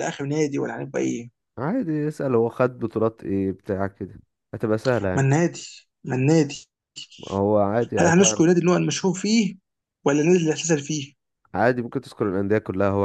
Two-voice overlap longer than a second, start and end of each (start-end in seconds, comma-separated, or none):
none